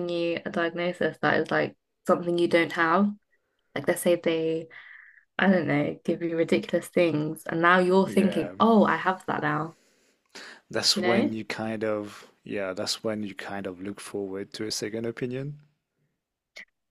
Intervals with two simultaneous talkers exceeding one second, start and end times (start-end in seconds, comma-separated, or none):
none